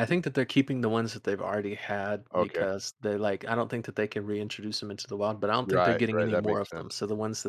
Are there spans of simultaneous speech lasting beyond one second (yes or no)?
yes